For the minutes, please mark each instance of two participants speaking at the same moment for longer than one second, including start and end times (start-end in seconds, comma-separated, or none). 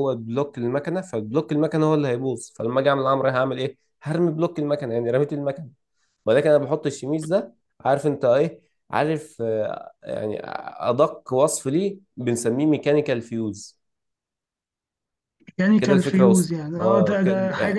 15.8-17.3